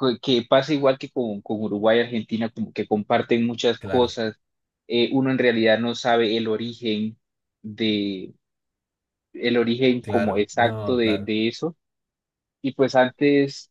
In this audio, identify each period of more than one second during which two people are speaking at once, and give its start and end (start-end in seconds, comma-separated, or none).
10.0-11.3